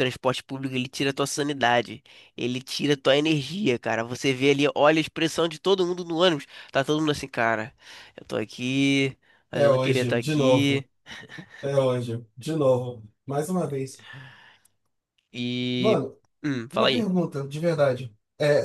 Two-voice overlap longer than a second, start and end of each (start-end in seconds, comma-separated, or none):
9.5-10.8